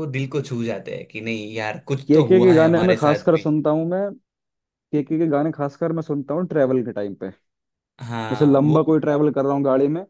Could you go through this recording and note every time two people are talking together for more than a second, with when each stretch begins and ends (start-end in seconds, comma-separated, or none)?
2.1-3.5